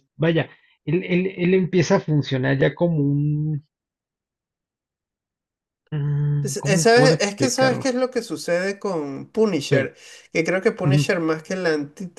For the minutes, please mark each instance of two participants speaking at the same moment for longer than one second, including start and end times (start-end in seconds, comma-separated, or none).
6.4-7.9